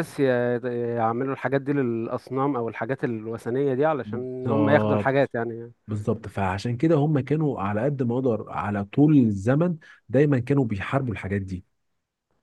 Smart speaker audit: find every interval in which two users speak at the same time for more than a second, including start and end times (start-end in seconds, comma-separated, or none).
4.0-5.3